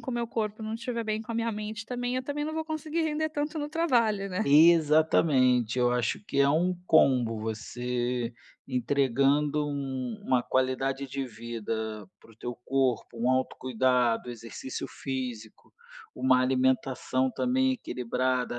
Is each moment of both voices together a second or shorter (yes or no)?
yes